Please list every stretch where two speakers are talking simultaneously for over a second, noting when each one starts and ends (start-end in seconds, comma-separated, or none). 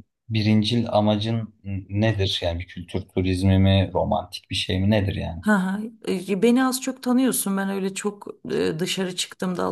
none